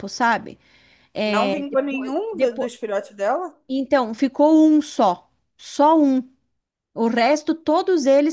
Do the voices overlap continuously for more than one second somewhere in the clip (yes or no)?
yes